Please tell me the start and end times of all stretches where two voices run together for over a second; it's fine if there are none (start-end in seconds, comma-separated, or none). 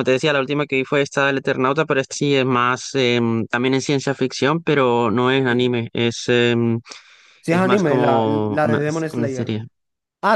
7.5-9.5